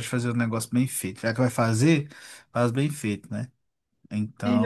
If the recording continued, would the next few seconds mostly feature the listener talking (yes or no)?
yes